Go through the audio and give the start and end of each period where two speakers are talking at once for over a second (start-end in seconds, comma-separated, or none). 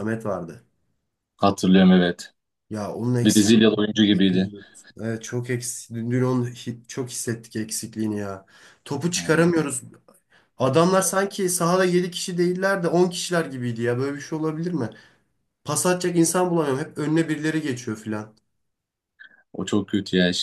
3.2-4.5